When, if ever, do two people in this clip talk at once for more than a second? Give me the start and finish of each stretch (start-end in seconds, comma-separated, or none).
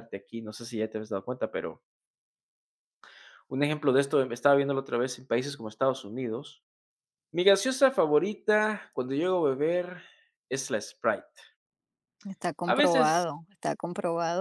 none